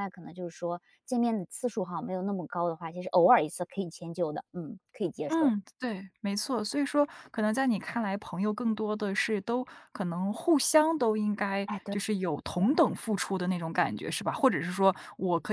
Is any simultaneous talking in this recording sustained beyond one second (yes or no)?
no